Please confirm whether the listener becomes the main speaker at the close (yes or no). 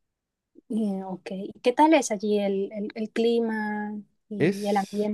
yes